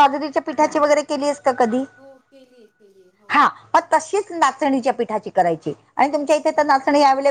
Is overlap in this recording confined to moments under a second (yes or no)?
yes